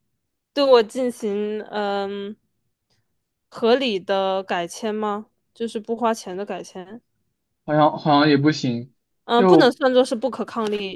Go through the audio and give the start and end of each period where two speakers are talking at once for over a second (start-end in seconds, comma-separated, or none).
none